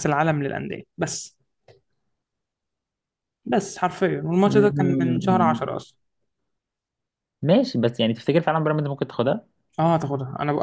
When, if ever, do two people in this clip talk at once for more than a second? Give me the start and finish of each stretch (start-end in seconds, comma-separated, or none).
4.5-5.7